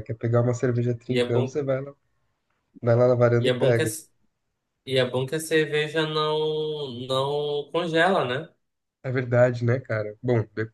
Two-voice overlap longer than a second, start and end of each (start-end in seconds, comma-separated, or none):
none